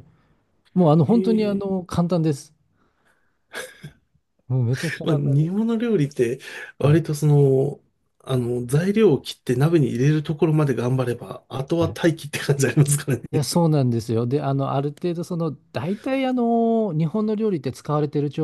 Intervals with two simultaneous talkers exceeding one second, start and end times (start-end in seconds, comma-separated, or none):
none